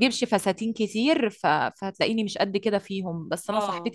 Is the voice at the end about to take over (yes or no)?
no